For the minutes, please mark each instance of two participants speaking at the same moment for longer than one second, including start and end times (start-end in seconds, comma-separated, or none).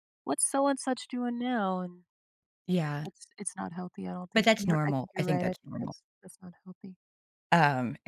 4.3-6.0